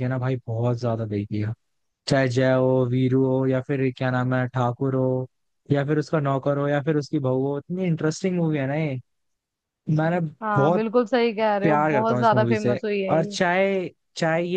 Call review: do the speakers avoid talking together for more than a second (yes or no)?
no